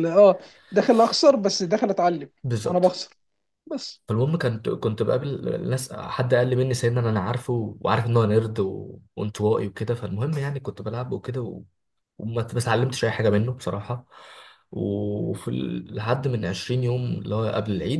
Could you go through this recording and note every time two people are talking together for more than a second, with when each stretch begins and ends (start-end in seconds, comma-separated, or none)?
none